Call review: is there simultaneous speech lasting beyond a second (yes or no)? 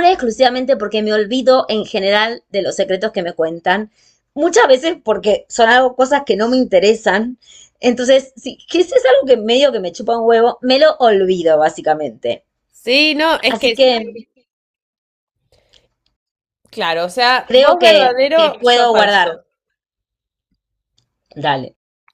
yes